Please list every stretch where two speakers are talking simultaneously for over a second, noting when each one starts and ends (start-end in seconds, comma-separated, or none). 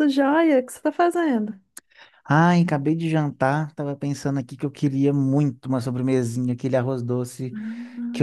none